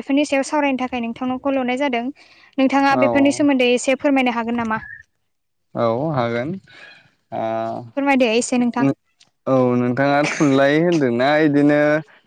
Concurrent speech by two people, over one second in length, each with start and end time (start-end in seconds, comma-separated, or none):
none